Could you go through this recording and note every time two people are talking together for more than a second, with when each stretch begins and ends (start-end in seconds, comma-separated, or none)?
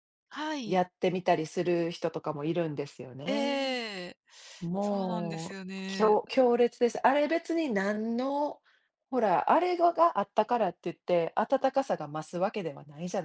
4.8-6.2